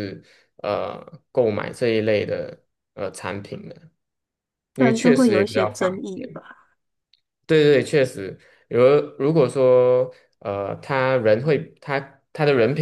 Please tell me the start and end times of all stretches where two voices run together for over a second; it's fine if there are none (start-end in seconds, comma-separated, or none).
4.8-6.4